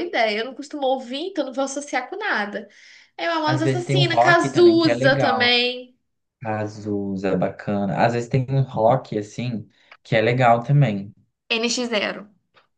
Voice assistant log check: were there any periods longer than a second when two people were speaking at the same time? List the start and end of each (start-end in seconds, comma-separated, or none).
3.5-5.5